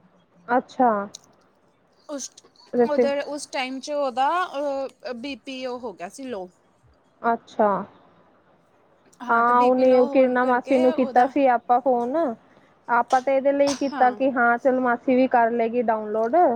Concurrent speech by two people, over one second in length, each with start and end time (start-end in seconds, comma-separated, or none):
9.4-11.3